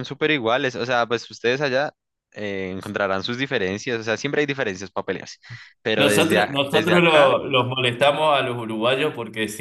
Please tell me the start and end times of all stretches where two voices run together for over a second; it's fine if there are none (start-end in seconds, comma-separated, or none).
6.0-7.3